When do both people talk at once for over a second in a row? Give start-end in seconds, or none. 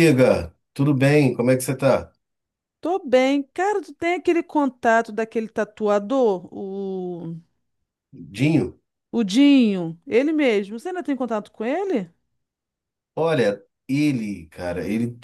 none